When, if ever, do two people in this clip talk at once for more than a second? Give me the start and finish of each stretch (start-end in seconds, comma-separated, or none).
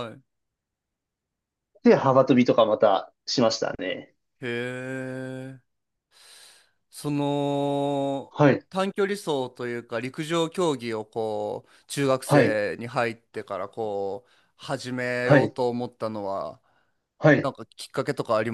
none